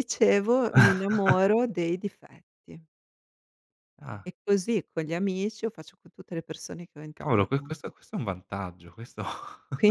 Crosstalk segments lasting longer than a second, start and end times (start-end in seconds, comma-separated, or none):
none